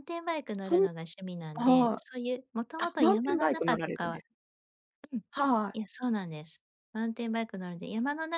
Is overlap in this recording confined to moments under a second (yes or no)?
no